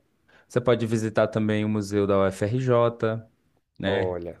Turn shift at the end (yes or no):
no